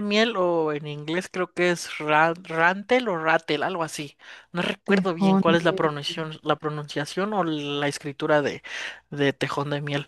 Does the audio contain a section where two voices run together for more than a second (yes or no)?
yes